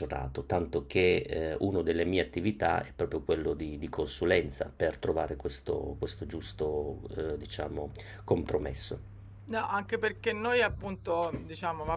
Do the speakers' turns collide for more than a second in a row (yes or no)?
no